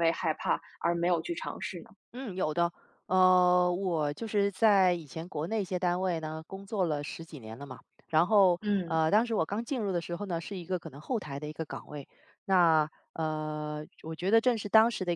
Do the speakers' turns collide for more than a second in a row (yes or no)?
no